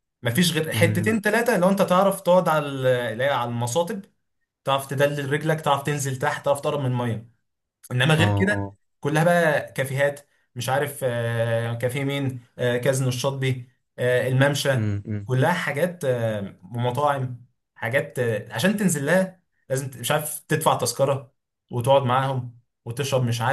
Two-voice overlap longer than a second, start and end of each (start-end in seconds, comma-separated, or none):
none